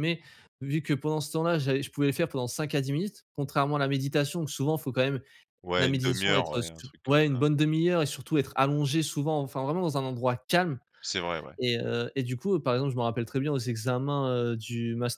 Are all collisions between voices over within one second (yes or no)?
no